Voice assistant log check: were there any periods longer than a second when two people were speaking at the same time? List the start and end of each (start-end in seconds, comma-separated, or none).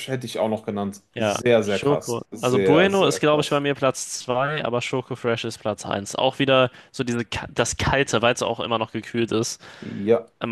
1.1-3.6